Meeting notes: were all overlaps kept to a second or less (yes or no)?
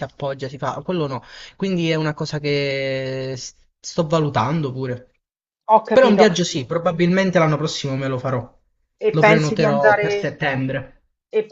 no